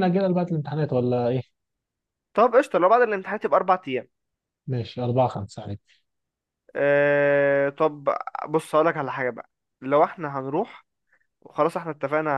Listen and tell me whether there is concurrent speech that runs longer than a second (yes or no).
no